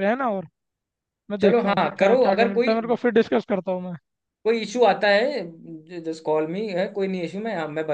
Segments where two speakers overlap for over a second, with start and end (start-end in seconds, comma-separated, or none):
1.4-2.8